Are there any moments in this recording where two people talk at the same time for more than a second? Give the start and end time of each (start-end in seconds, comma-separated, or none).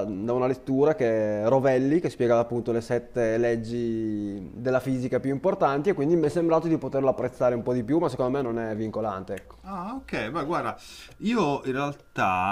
none